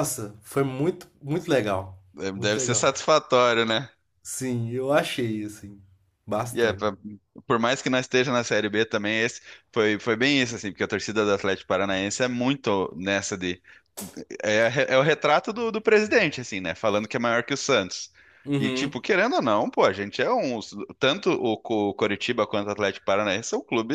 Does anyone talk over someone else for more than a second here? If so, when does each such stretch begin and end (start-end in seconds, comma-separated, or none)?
none